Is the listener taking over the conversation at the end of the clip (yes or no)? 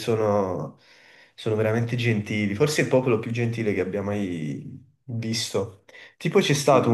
no